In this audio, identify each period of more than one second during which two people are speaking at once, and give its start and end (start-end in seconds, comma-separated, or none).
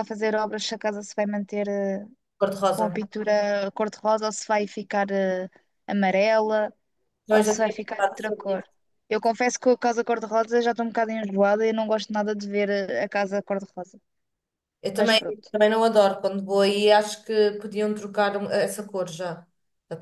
7.3-8.6